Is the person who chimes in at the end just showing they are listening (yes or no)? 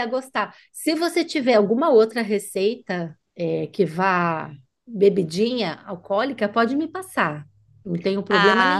no